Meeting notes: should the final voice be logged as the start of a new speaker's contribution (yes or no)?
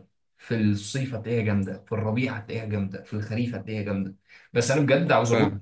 no